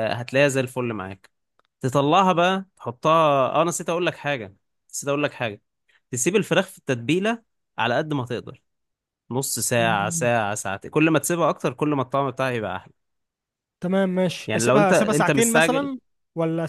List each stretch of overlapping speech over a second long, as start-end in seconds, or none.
14.5-15.9